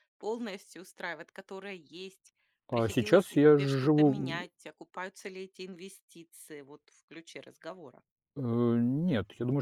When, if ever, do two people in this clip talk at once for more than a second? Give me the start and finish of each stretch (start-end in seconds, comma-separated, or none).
2.7-4.5